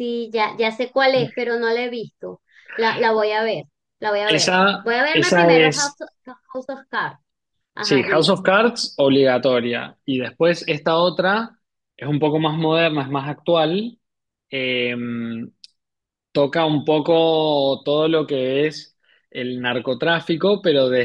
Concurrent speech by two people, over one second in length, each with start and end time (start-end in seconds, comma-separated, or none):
4.3-6.0